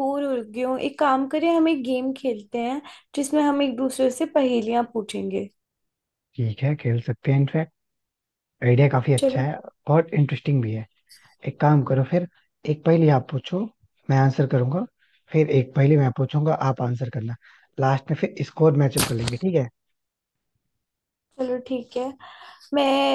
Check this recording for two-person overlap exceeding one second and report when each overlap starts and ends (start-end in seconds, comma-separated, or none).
none